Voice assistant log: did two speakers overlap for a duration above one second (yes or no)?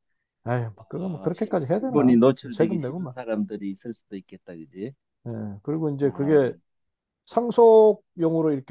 yes